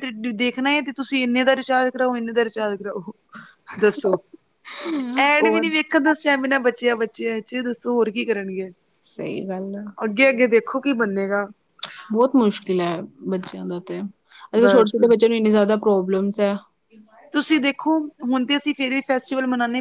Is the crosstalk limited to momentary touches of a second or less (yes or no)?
yes